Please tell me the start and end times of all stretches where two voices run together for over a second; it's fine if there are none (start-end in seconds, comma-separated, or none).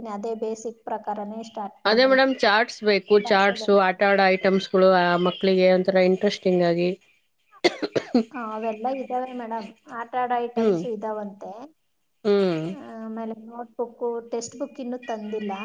none